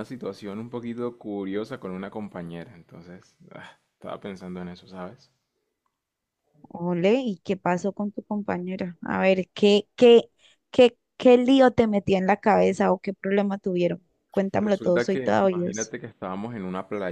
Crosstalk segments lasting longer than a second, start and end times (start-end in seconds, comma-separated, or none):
14.6-15.9